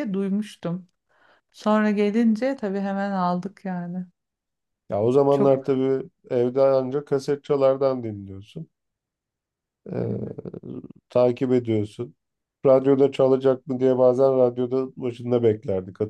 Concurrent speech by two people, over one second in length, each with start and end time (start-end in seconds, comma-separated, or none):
none